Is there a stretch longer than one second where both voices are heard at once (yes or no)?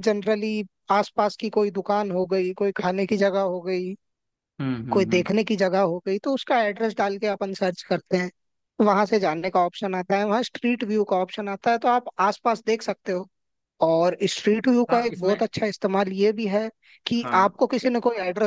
no